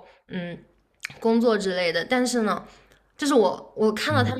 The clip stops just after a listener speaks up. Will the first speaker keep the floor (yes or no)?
yes